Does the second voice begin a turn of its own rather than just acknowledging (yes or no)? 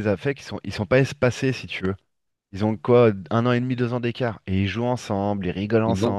yes